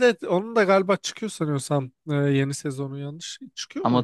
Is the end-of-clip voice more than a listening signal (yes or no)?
yes